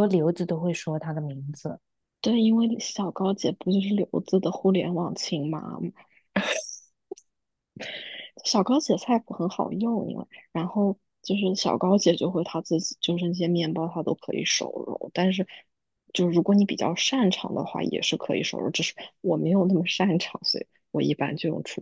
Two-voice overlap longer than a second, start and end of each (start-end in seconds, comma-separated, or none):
none